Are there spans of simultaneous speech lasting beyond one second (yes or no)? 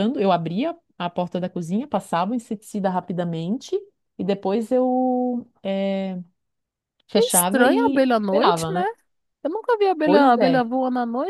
yes